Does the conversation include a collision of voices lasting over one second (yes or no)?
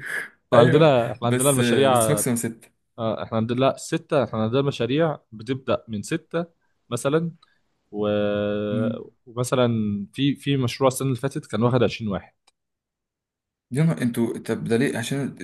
yes